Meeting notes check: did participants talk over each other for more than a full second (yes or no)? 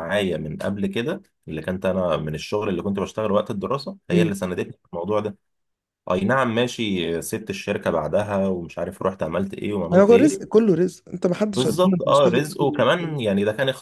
yes